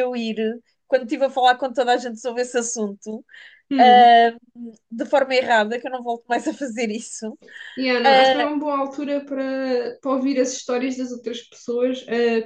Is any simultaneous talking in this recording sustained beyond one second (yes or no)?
no